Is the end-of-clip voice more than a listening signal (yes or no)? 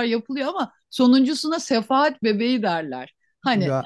no